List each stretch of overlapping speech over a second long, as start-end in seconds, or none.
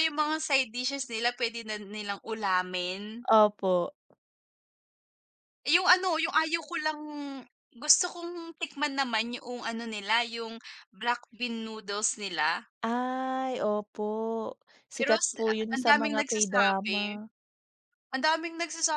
15.0-17.0